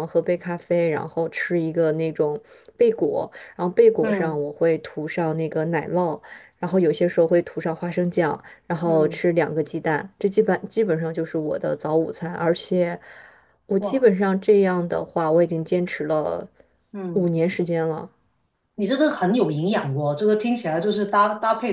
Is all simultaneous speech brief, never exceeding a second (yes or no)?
yes